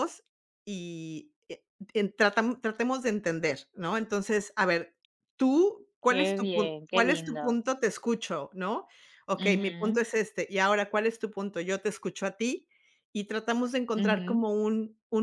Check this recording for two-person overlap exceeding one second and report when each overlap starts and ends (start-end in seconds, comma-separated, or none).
6.0-7.6